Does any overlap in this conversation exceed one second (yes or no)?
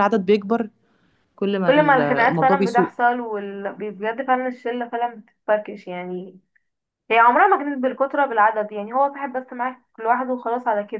yes